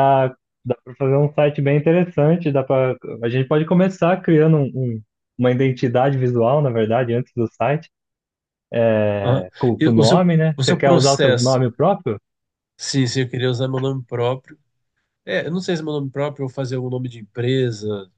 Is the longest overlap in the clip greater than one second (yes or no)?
yes